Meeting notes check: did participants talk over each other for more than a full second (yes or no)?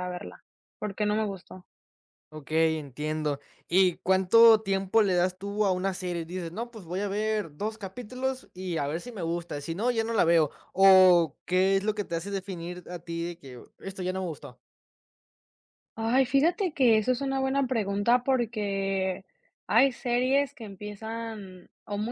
no